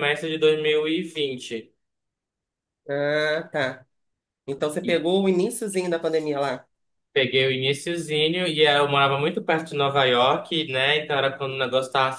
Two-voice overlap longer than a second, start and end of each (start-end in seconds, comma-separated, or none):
none